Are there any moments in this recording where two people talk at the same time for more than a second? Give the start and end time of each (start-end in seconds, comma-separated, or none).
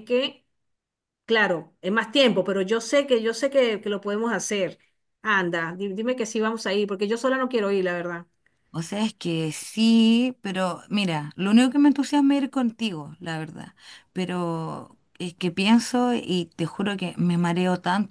none